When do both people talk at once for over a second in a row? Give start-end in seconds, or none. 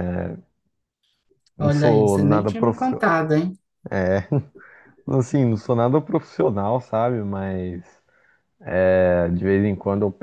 1.6-3.0